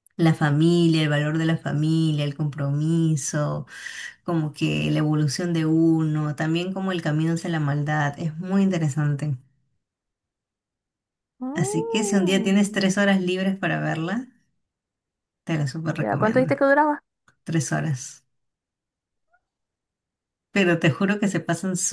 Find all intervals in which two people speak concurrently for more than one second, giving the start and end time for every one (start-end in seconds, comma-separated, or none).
11.6-12.8